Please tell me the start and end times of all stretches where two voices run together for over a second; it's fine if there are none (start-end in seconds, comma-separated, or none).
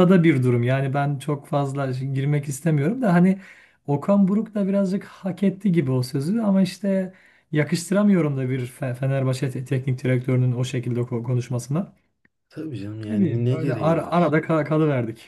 13.1-14.3